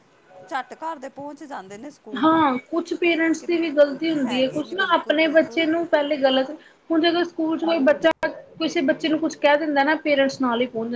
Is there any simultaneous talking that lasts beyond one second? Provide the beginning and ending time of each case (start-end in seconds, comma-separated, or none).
4.2-5.6